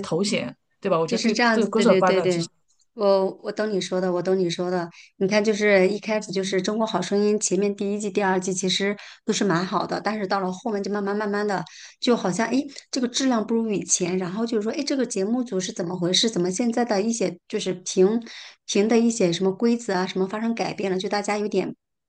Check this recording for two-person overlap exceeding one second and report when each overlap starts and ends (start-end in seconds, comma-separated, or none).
1.0-2.4